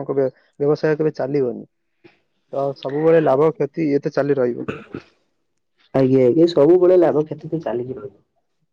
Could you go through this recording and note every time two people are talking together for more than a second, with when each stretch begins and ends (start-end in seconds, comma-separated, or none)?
none